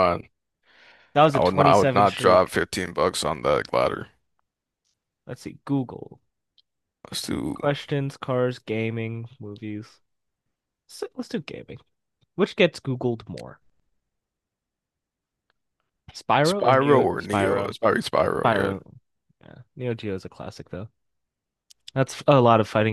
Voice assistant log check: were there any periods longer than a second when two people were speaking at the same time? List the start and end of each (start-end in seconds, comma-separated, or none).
1.3-2.5, 16.4-17.8